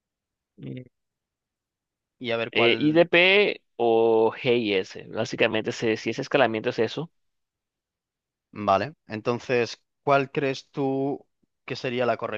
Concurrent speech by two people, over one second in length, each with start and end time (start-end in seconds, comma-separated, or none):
none